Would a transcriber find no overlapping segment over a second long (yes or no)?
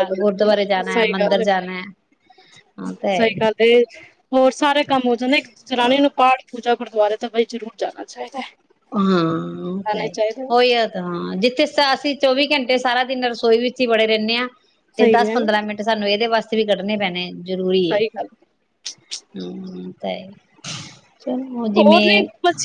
yes